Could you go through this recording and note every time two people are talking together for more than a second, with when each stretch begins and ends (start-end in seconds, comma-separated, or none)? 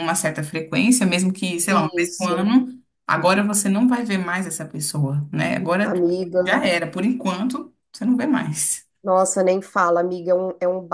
none